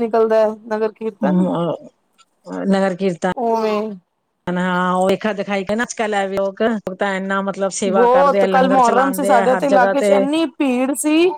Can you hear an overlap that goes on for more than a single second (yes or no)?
no